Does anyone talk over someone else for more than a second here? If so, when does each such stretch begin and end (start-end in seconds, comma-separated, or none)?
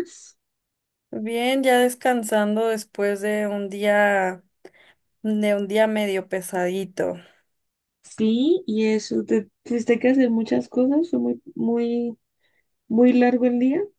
none